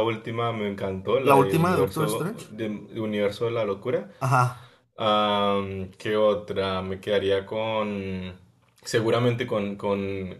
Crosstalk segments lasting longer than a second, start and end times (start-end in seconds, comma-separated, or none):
1.2-2.5